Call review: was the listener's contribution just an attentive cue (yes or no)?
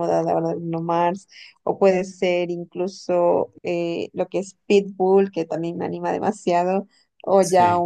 yes